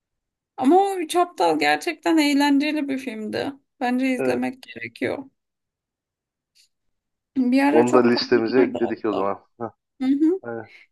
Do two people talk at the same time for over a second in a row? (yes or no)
yes